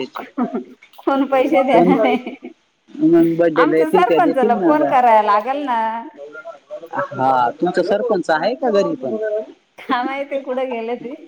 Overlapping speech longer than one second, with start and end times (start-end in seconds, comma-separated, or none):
3.6-4.9